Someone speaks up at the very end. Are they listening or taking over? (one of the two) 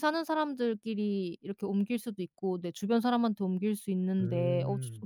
listening